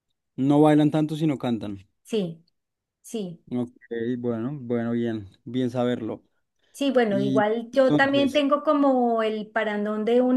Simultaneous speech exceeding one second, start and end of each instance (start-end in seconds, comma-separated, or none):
7.1-8.4